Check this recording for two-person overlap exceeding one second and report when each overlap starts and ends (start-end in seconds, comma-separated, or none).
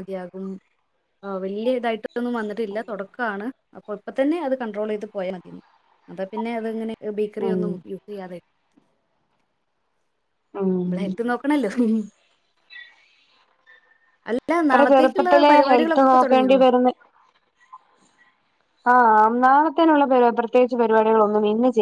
14.6-16.5